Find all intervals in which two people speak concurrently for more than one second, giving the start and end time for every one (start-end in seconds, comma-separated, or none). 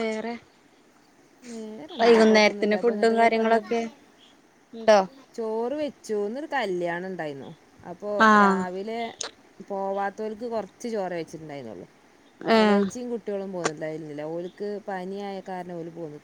2.0-3.6